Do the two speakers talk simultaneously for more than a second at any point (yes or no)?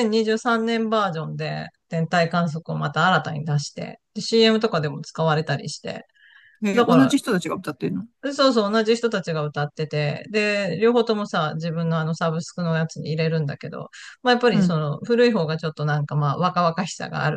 no